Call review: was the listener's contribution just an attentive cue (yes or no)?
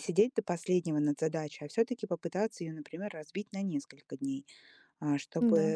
yes